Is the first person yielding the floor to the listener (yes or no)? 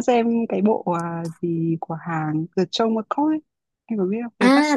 yes